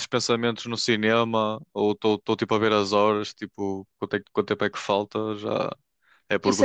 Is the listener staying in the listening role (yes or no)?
no